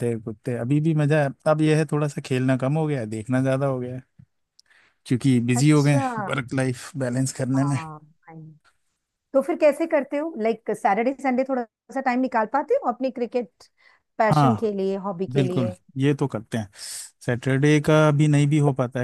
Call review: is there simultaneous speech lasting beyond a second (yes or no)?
no